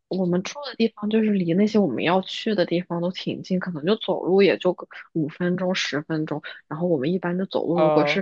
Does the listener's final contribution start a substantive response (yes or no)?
no